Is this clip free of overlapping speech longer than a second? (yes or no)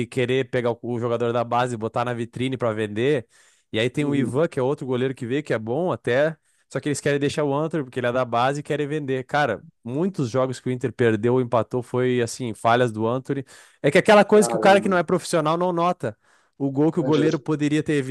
yes